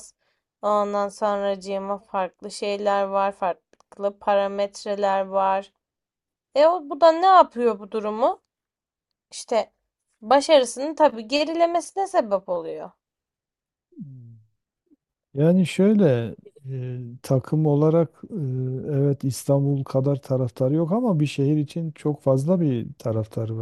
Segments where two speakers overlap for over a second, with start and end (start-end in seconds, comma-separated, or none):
none